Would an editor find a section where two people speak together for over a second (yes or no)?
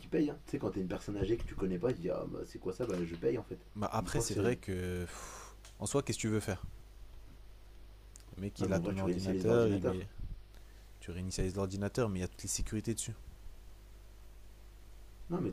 yes